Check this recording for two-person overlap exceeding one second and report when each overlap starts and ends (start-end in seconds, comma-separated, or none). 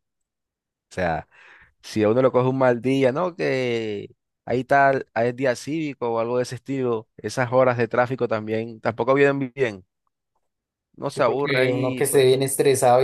11.1-12.4